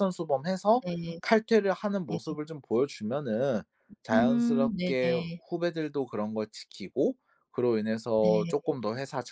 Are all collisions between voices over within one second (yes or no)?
no